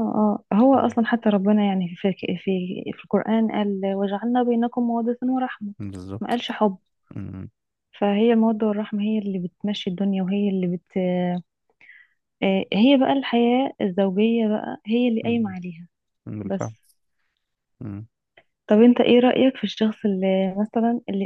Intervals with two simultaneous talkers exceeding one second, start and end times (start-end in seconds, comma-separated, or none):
none